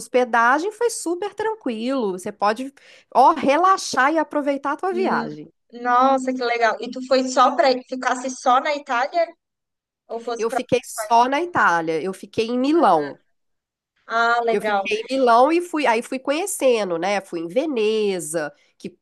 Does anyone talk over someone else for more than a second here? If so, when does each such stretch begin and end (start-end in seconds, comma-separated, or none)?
none